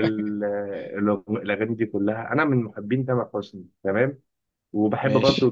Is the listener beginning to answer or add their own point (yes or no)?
no